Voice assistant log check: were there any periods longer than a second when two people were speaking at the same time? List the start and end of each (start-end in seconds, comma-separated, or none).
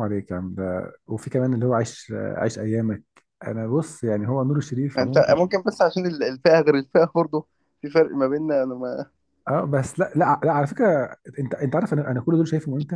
none